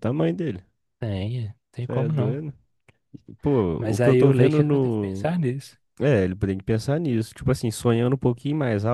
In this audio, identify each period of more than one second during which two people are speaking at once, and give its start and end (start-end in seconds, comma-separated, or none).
3.8-5.3